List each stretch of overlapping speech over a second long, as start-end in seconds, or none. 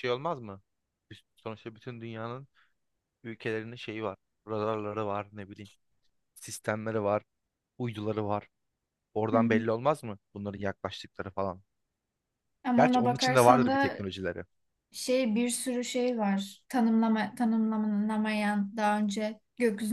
12.8-14.0